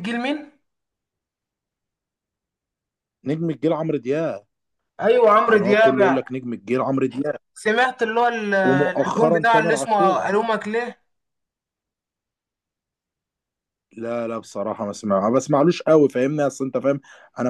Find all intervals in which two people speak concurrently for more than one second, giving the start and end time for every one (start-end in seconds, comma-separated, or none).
8.7-10.1